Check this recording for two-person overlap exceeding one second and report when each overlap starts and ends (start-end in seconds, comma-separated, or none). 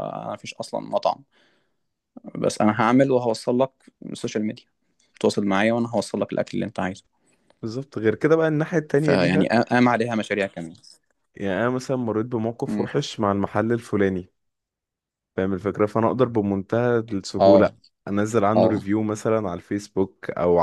none